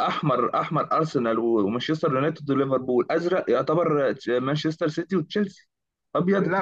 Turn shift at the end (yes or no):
yes